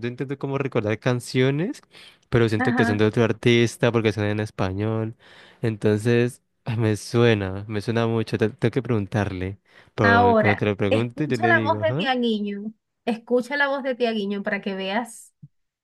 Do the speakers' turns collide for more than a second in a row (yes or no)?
yes